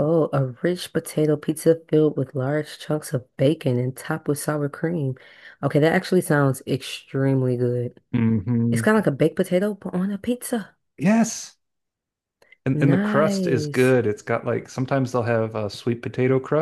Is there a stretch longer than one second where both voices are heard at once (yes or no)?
yes